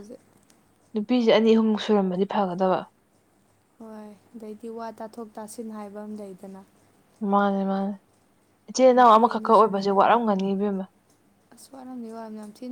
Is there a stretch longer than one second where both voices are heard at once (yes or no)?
yes